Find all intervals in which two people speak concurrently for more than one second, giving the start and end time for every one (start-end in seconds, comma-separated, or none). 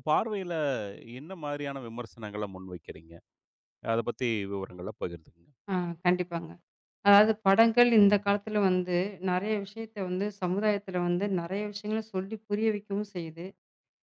none